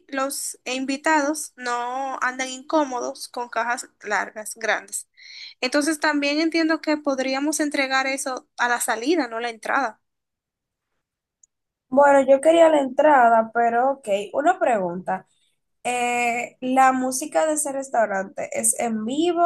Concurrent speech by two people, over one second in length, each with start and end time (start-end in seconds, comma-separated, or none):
none